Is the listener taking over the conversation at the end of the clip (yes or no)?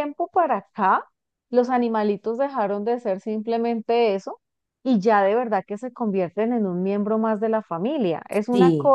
no